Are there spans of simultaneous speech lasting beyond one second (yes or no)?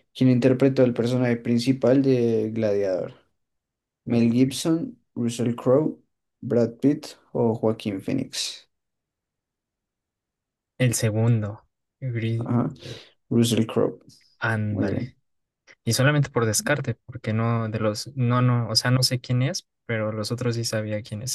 no